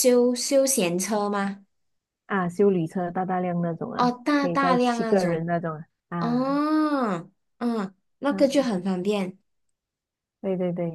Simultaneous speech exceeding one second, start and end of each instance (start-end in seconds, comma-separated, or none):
4.0-5.5